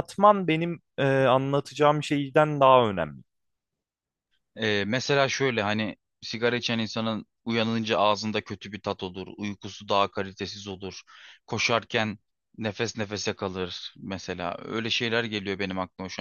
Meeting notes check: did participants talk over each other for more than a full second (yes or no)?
no